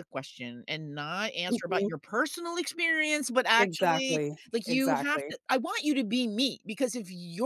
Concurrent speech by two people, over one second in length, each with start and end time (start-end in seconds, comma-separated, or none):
3.6-5.3